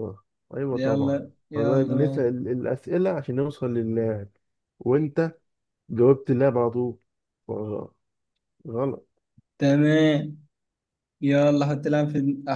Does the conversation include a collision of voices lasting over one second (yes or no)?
yes